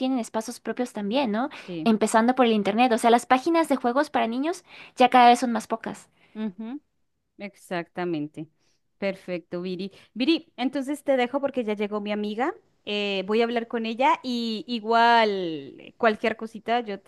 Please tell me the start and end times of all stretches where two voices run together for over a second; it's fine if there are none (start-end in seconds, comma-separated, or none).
none